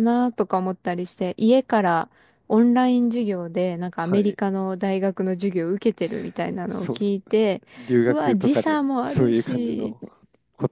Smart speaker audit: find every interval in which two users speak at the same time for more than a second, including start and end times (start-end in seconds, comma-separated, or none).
8.1-9.9